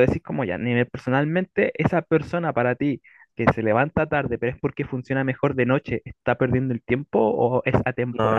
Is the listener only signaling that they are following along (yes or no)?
yes